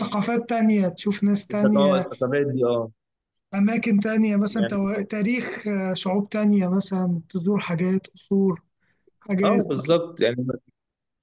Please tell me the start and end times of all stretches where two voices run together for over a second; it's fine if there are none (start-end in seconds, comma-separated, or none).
none